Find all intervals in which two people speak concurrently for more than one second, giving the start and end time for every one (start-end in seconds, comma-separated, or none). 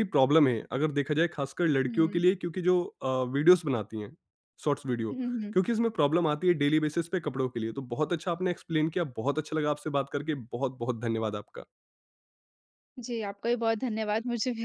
none